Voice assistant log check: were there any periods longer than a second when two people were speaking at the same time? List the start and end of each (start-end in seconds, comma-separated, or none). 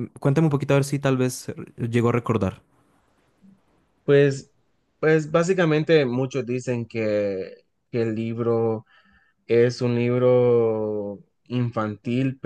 none